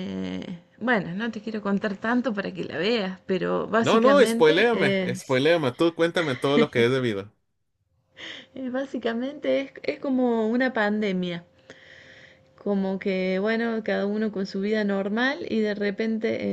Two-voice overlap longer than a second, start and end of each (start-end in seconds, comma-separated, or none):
3.8-5.4